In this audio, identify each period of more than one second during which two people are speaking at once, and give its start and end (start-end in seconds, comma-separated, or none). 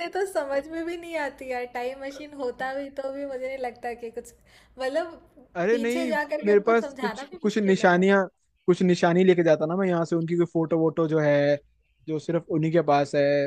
5.7-8.0